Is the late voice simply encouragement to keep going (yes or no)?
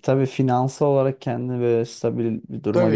no